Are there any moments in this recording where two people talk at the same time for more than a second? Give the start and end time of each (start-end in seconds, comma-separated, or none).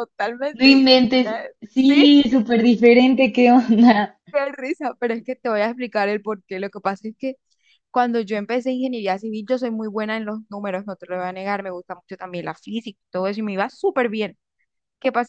0.5-2.0